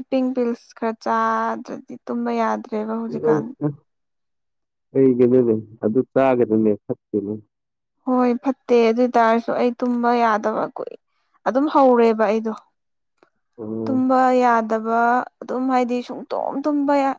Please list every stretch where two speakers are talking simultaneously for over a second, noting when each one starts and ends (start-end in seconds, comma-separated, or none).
none